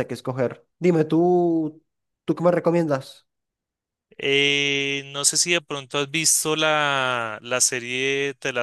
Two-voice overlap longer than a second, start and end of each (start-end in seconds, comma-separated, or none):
none